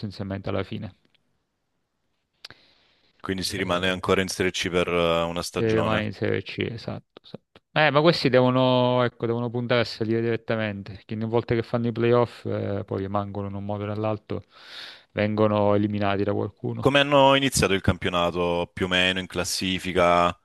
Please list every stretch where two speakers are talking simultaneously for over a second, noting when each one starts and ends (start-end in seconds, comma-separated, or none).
none